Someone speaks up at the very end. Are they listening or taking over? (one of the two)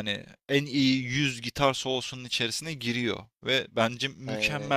listening